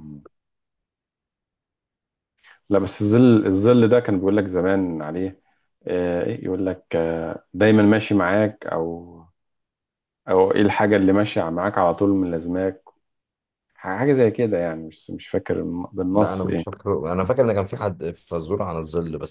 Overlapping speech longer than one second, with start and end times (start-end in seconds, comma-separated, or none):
none